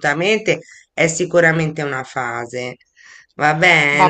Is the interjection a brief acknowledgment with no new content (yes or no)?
no